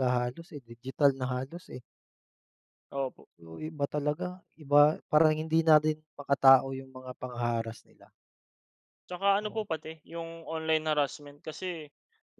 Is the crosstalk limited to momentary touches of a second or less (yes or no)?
yes